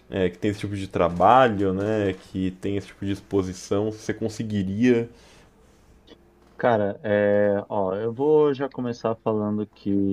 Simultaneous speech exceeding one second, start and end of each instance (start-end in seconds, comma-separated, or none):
none